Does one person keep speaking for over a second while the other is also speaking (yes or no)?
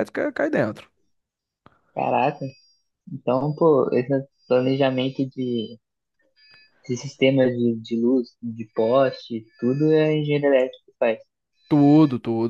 no